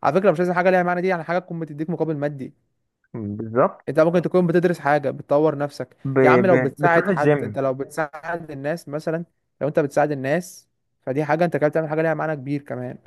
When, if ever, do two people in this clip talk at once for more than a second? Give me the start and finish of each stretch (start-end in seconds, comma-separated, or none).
6.0-7.6